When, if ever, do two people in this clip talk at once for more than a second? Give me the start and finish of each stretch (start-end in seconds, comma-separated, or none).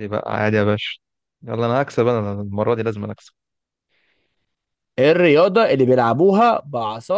none